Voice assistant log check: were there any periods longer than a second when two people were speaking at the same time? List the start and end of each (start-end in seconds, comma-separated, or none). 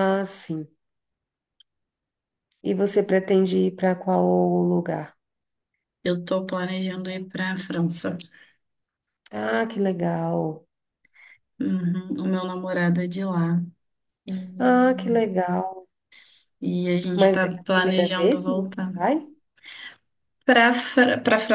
17.1-18.9